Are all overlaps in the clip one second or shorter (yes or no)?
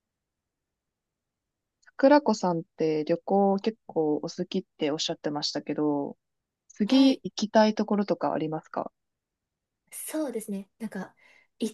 yes